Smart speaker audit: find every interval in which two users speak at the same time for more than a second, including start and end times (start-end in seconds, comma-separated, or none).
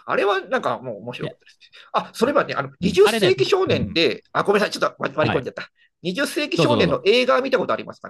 2.8-4.0